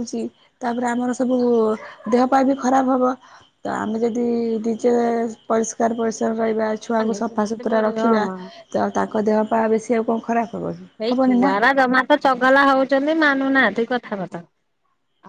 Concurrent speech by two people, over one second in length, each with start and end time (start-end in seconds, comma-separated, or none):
6.9-8.2